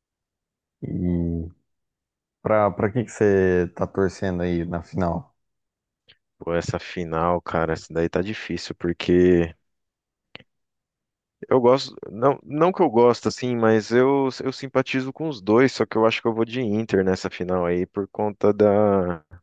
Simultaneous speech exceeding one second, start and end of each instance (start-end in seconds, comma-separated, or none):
none